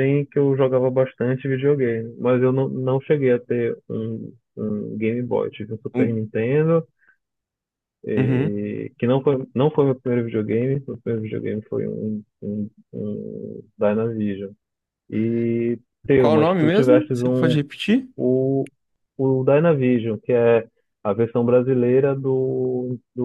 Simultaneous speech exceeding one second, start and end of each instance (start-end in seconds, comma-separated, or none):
16.2-17.6